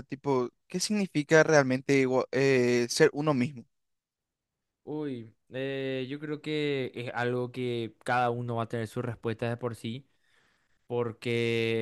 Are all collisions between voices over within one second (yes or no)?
yes